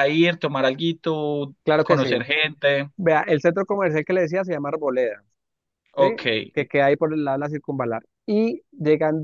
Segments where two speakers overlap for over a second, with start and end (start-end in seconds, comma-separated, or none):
none